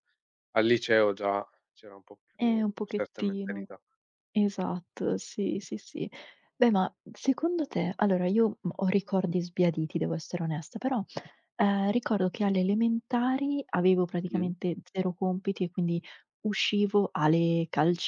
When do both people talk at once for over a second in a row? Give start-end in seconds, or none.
2.4-3.7